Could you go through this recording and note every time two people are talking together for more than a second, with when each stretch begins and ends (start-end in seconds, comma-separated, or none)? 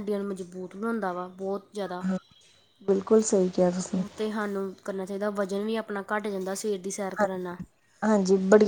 none